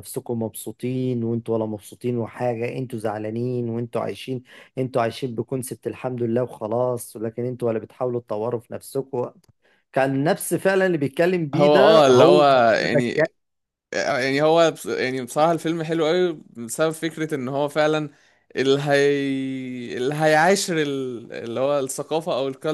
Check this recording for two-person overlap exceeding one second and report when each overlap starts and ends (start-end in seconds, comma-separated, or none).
11.5-13.2